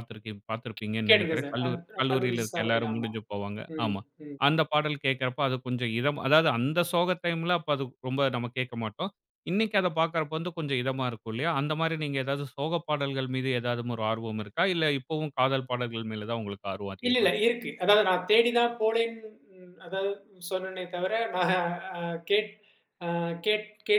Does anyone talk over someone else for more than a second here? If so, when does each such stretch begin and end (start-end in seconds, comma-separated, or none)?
1.1-3.1